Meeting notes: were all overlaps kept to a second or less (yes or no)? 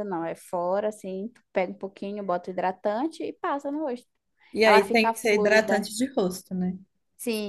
no